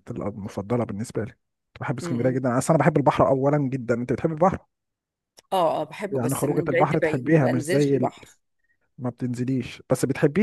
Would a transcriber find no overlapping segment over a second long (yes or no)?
no